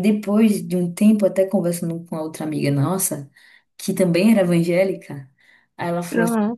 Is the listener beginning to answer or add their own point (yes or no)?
no